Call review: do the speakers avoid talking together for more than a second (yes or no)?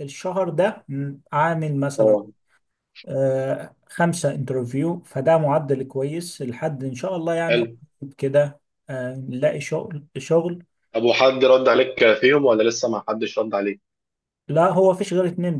yes